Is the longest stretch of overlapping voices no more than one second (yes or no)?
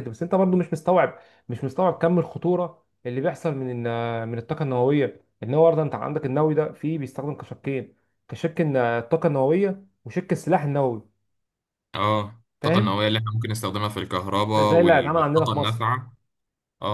no